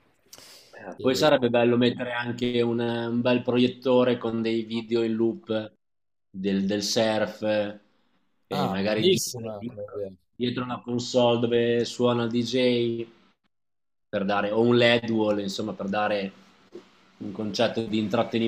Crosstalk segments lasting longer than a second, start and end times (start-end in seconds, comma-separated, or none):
8.5-10.1